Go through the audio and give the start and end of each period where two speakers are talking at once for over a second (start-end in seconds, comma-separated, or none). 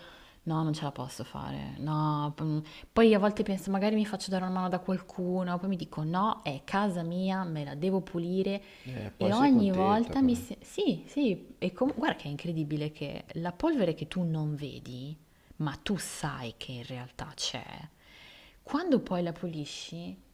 9.2-10.4